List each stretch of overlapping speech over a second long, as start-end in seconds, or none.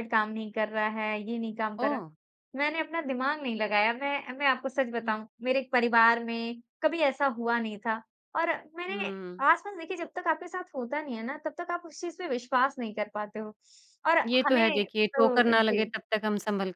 14.2-15.9